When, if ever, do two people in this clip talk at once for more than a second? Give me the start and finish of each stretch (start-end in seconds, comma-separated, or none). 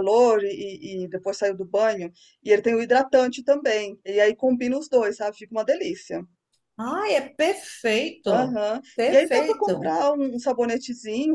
8.2-9.9